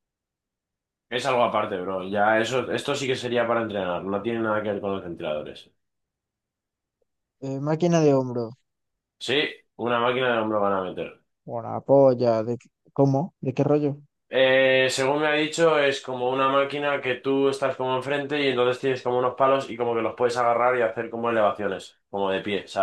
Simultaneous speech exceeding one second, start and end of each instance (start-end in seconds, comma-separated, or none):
none